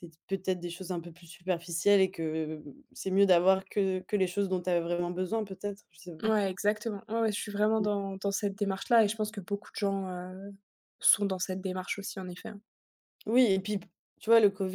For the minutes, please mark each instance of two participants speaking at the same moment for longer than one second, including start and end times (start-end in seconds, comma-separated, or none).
none